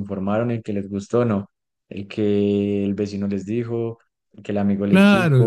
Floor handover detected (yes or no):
yes